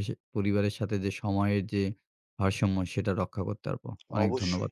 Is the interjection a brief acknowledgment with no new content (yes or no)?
no